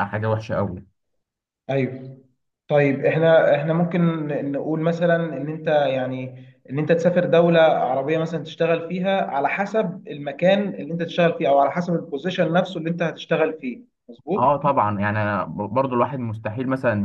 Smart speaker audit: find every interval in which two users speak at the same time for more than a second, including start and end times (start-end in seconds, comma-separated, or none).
none